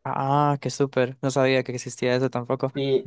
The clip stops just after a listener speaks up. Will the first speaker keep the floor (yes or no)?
no